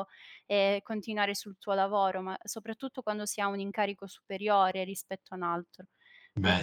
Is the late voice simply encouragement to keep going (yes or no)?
yes